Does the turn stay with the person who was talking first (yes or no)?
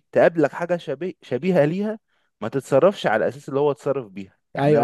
no